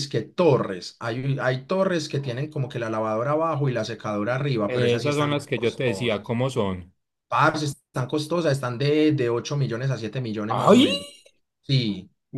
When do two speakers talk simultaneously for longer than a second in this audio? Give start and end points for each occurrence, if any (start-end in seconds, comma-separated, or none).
4.7-6.3